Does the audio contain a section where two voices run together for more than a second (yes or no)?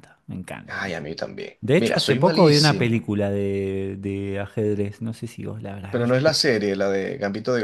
yes